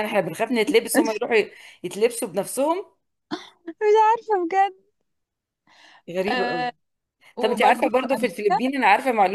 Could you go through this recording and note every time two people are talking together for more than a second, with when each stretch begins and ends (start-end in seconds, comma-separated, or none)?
7.4-8.7